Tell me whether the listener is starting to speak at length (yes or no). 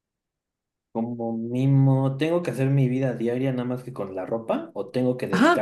yes